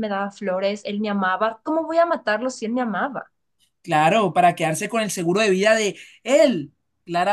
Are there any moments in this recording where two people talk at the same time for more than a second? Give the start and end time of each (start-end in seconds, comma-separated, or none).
none